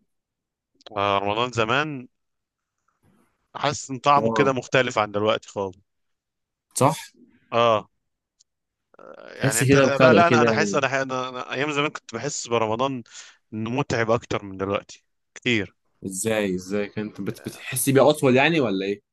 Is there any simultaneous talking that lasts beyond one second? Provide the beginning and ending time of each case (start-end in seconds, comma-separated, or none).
9.4-10.8